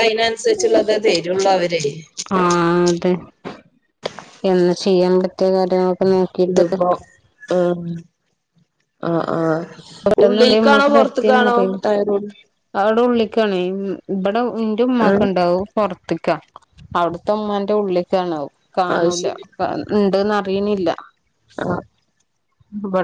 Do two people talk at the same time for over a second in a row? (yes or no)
yes